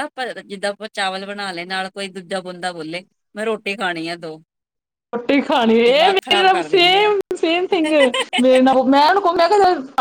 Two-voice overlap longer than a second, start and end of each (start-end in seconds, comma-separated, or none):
5.8-7.1